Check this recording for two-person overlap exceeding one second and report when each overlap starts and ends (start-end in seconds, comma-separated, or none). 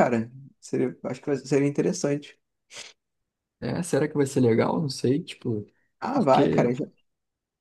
none